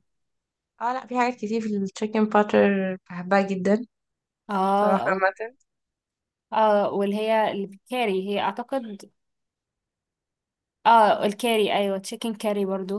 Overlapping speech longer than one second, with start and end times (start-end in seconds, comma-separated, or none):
none